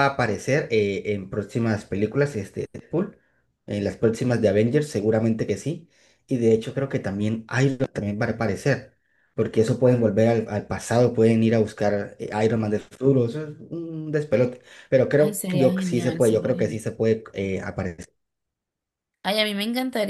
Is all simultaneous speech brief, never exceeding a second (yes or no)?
no